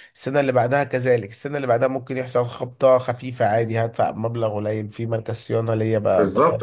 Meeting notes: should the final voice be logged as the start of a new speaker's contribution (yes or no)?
yes